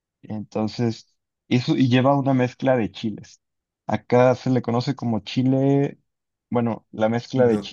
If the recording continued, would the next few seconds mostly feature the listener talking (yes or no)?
yes